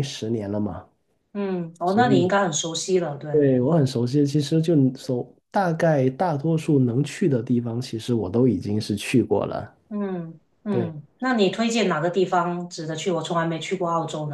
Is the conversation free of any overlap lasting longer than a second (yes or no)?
yes